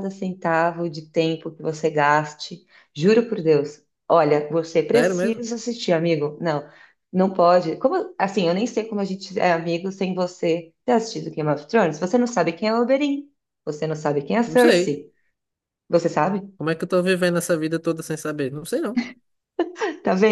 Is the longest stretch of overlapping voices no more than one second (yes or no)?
yes